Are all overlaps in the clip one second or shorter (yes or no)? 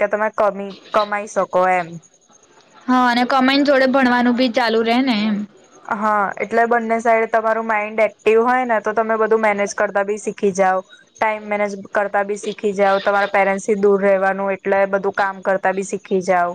yes